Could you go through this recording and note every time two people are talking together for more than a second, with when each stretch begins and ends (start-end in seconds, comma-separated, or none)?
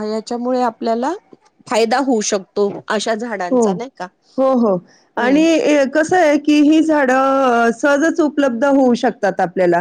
none